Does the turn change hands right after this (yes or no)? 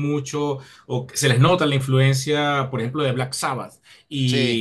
no